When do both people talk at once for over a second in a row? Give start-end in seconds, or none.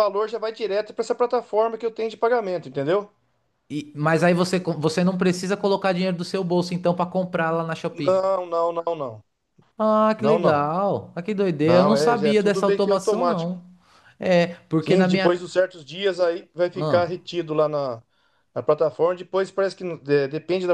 11.6-13.5